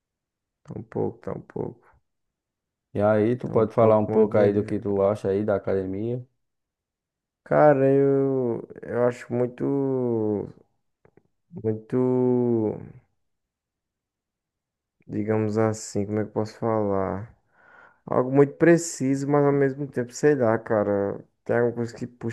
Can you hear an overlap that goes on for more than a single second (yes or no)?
yes